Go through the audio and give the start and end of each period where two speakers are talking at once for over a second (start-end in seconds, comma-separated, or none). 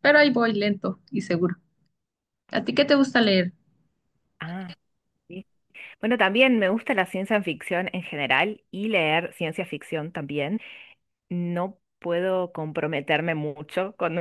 none